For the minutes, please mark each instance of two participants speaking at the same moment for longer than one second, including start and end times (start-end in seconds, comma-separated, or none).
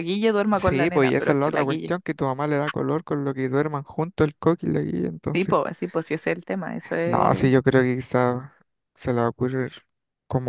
0.5-1.9